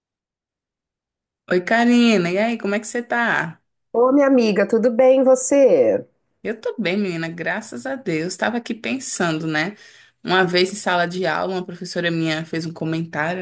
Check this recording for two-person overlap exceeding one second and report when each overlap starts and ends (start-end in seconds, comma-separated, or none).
none